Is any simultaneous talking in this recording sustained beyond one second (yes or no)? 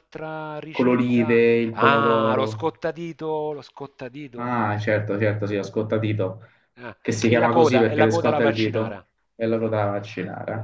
yes